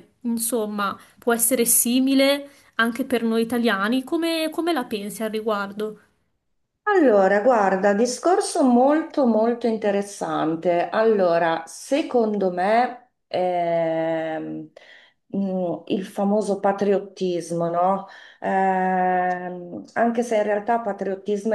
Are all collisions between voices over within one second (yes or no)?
yes